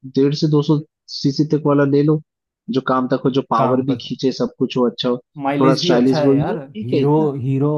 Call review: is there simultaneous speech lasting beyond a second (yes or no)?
yes